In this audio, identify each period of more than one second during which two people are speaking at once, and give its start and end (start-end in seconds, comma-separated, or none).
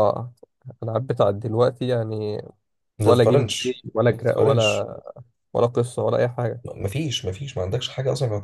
3.0-4.9